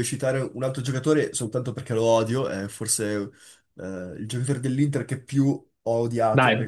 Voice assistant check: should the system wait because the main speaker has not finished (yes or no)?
no